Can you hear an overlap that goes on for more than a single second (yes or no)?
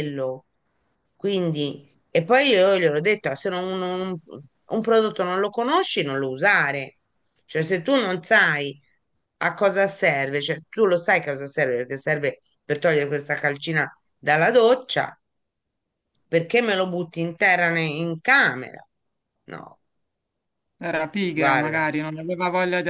no